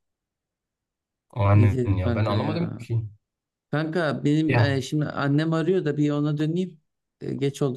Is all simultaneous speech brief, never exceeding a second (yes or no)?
no